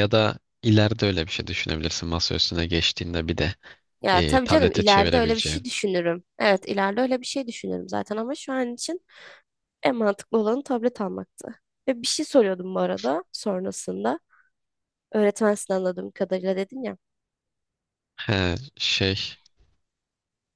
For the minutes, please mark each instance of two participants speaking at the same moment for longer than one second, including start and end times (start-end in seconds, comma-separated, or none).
4.1-5.6